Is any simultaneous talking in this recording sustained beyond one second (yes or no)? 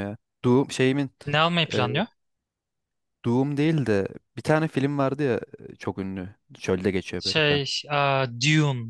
no